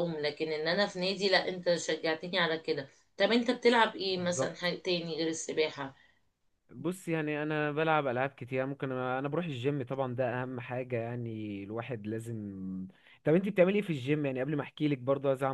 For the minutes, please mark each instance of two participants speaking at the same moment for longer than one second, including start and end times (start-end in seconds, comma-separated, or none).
none